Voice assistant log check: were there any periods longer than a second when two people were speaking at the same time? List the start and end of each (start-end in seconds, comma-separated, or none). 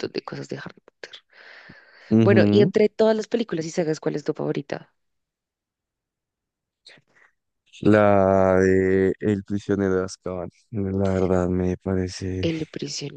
none